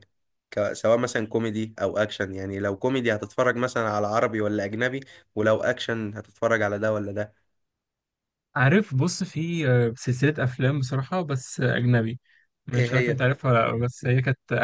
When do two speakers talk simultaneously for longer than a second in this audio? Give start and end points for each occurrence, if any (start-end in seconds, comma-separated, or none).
none